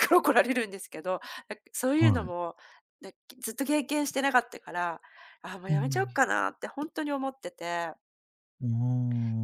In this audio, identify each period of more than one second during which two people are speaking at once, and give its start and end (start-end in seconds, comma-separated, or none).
none